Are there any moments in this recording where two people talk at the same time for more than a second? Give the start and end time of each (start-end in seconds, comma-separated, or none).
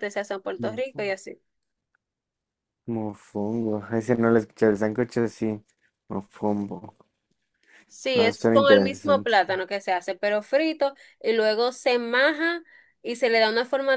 8.1-9.3